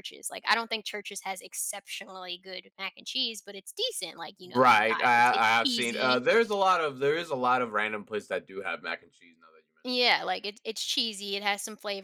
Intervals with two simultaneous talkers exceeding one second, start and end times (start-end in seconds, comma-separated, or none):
4.4-6.2